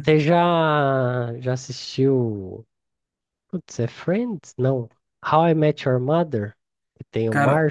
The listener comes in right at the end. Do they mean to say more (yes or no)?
yes